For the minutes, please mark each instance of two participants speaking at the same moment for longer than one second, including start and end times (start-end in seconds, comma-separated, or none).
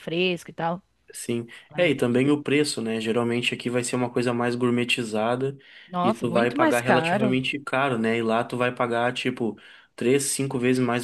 6.0-7.4